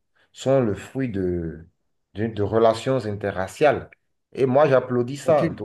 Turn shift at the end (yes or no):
no